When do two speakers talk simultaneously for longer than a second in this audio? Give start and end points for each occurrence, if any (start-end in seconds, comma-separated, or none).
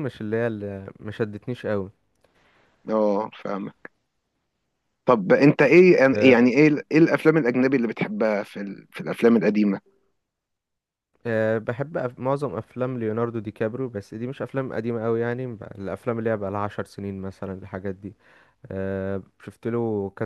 none